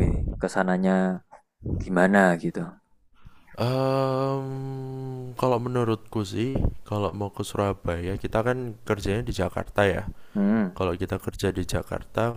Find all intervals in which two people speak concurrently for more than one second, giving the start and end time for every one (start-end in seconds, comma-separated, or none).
none